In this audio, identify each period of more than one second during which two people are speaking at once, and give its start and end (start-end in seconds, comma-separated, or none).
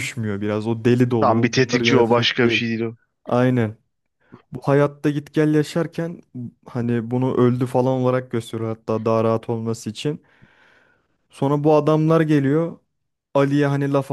1.2-2.6